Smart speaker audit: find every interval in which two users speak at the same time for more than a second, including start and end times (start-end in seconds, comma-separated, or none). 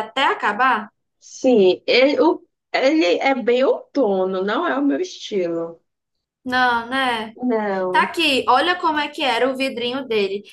none